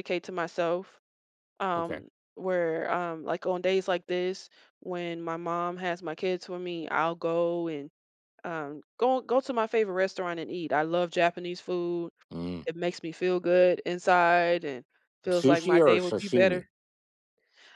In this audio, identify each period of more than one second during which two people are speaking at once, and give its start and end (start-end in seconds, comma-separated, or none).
15.3-16.6